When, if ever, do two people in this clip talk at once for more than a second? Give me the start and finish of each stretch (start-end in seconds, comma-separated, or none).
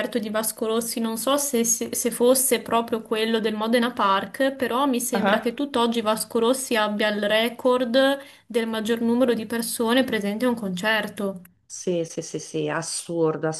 none